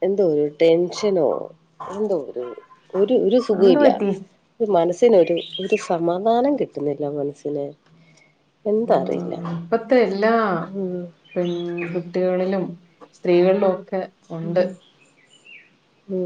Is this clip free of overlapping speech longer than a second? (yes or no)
yes